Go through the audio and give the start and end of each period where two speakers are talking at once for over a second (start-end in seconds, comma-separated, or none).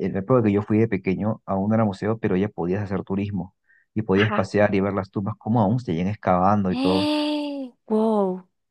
none